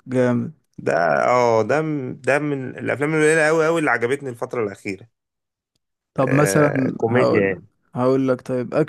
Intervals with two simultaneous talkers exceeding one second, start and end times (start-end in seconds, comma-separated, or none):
6.3-7.5